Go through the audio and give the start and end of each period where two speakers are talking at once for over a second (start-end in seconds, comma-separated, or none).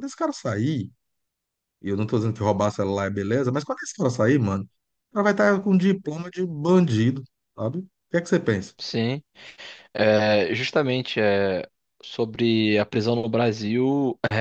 none